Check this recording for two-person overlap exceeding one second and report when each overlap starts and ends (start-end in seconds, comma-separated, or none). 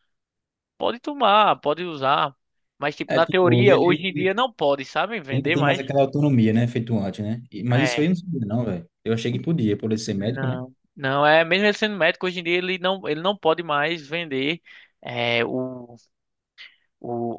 3.1-4.3